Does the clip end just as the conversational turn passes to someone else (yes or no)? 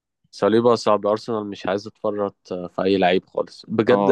no